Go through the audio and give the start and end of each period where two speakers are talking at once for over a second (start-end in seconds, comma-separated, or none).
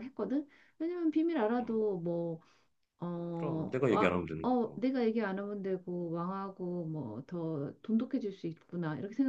3.3-4.8